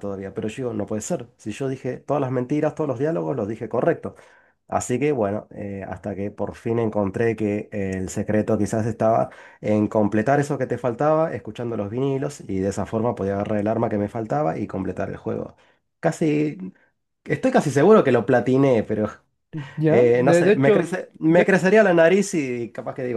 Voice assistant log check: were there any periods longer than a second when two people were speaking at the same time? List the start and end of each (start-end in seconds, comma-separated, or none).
19.9-21.6